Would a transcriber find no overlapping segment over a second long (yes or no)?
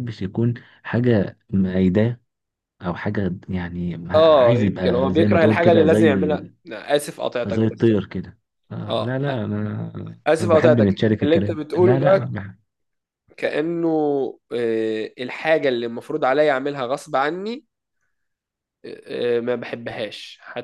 no